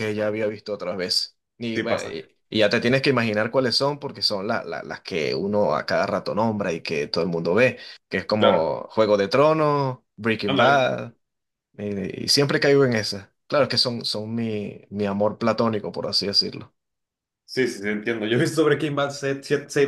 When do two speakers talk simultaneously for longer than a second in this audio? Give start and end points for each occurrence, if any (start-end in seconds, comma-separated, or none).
none